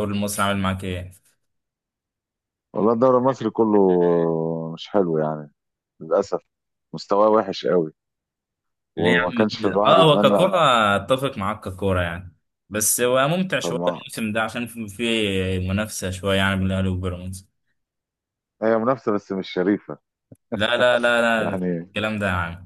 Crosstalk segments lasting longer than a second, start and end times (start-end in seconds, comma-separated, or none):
9.0-10.5